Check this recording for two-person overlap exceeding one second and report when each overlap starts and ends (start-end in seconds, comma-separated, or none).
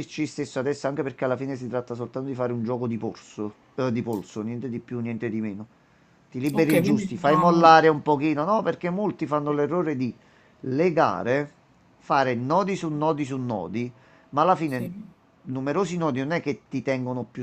6.5-7.8